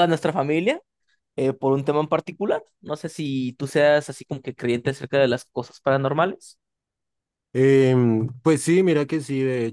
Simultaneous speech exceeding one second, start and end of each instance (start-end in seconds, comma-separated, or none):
none